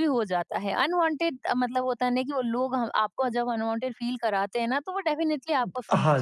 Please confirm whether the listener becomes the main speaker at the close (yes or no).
yes